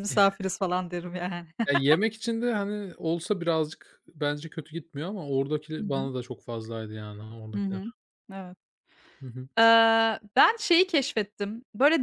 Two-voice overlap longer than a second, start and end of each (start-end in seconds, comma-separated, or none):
none